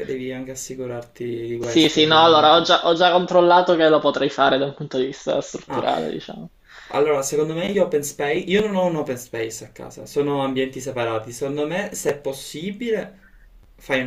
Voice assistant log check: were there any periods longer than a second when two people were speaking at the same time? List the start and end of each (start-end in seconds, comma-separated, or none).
1.6-2.8